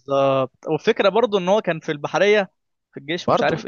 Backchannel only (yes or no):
yes